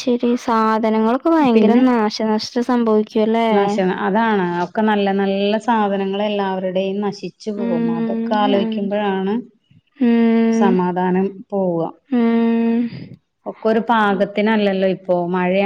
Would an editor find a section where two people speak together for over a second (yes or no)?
yes